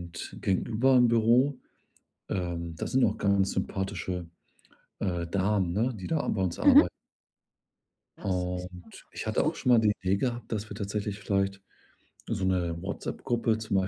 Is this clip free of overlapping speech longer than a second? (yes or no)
no